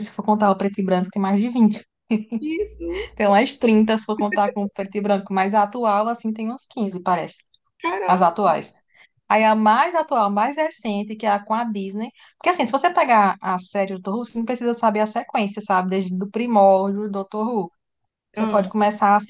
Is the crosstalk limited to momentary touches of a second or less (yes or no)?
yes